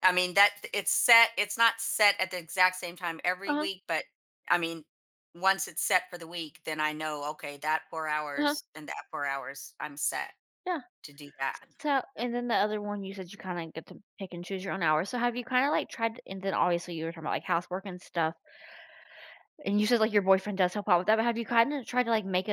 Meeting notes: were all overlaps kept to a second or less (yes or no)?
yes